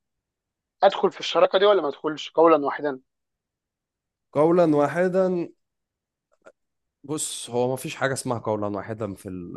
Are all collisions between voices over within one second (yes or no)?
yes